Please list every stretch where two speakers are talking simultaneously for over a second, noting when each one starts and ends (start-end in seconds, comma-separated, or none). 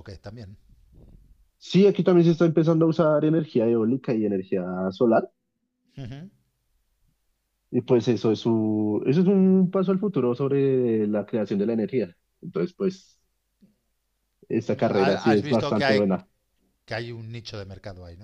14.8-16.0